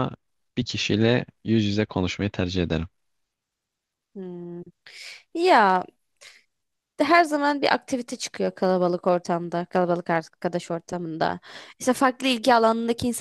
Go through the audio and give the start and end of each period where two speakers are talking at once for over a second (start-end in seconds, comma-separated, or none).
none